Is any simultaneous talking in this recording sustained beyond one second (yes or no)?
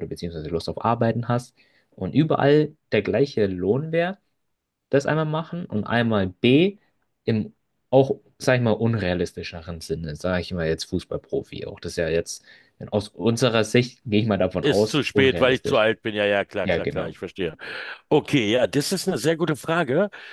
yes